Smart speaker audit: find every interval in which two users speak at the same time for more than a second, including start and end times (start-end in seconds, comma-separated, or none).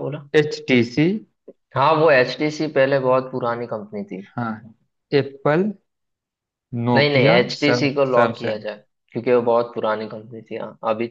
6.9-8.6